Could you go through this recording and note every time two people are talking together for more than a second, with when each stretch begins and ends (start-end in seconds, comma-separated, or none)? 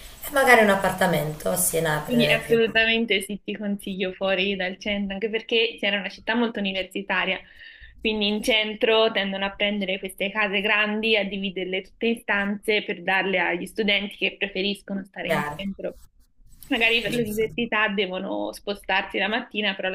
none